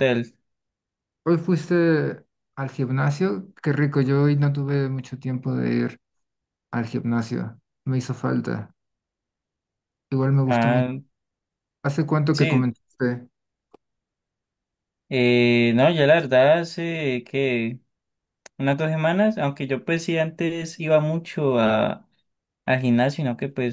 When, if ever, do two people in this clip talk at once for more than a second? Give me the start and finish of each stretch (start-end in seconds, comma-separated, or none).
none